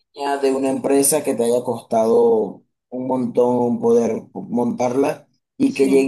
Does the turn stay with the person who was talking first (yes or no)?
yes